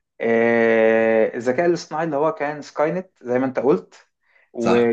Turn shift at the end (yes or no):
no